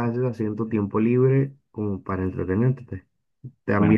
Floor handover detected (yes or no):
yes